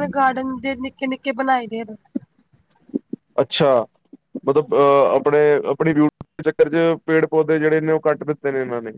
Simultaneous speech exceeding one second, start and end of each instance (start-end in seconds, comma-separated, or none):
none